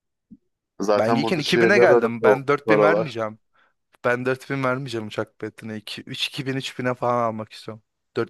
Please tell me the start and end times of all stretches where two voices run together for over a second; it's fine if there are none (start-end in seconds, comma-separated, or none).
0.9-3.2